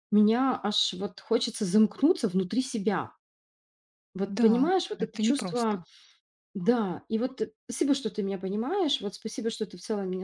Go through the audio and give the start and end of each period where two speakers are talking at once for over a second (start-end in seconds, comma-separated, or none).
4.3-5.8